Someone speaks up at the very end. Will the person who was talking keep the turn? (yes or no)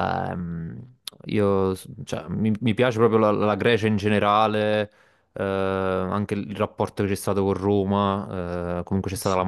yes